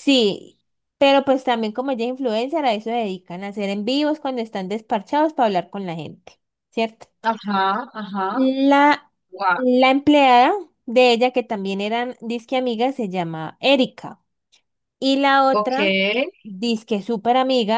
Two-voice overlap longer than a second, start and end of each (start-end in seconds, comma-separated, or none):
none